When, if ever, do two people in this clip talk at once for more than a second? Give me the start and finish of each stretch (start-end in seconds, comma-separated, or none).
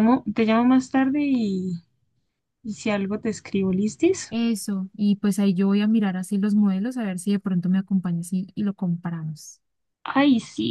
none